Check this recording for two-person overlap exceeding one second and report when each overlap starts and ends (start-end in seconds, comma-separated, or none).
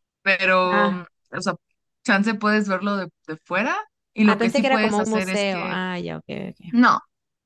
4.2-5.8